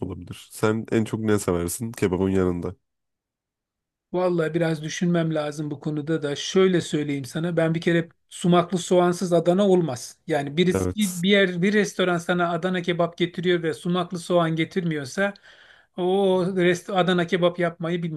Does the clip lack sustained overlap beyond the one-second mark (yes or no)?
yes